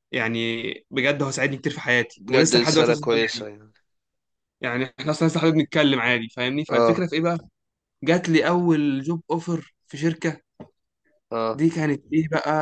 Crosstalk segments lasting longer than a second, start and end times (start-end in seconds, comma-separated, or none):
2.2-3.5